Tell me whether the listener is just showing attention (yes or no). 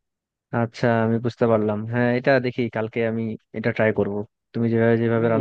yes